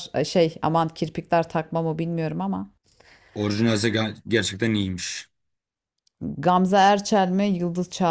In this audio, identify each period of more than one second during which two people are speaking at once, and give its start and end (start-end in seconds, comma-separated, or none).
none